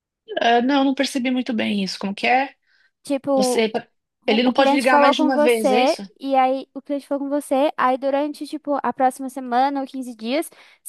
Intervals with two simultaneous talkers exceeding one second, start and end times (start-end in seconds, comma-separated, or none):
4.3-6.0